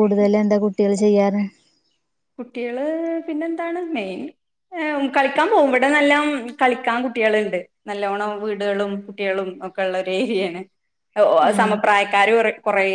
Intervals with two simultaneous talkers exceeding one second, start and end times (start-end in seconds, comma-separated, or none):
none